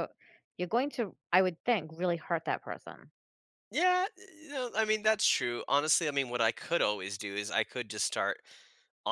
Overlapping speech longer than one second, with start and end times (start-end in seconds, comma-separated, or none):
none